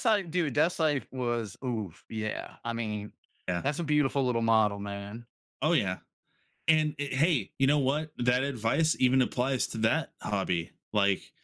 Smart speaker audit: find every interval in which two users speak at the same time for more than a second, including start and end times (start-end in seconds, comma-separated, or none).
none